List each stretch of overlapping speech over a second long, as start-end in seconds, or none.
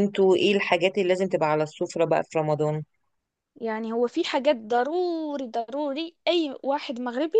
none